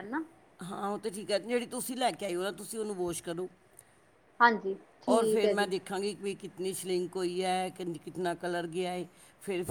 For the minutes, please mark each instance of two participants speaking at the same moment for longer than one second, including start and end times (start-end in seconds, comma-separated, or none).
none